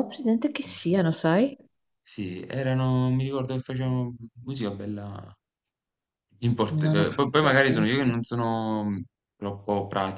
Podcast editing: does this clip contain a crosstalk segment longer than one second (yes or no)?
yes